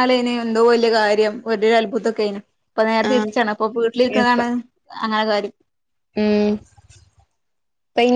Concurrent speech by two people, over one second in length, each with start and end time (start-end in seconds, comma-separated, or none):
none